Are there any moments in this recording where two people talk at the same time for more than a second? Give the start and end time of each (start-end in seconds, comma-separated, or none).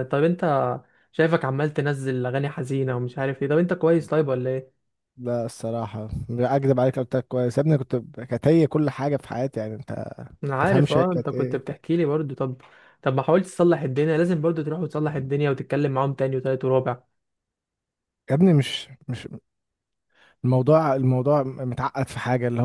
10.4-11.6